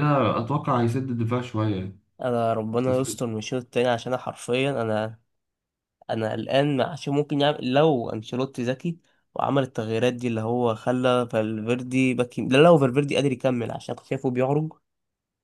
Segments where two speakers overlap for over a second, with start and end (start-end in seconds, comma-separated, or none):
none